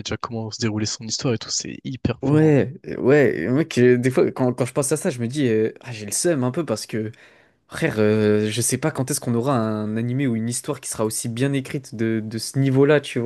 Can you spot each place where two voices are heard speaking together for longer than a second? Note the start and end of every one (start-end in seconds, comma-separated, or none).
none